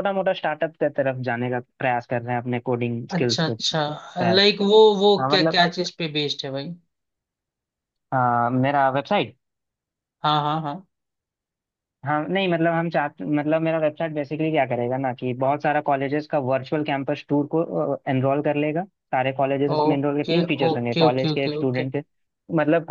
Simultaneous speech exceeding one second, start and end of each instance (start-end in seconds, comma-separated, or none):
3.2-4.4, 19.7-21.9